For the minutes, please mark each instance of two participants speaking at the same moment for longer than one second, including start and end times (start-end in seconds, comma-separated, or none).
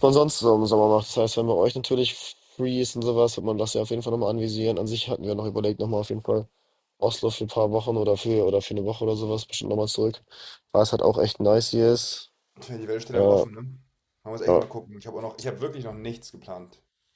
none